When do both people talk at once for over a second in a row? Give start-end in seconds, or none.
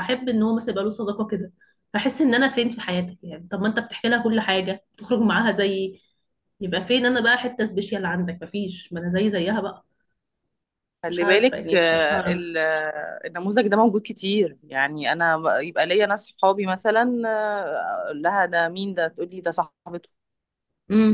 11.1-12.4